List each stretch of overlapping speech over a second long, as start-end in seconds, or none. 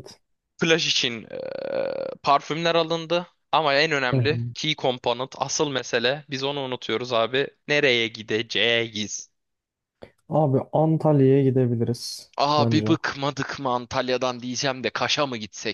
none